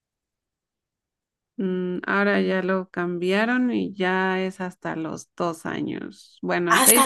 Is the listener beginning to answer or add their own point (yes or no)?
no